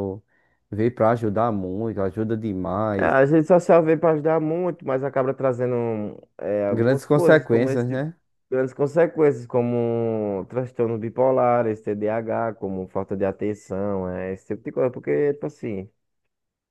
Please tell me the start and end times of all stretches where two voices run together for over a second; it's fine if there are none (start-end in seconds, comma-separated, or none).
6.7-8.0